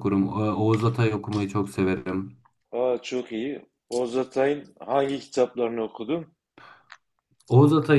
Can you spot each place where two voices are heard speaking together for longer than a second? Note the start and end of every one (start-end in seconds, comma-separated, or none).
none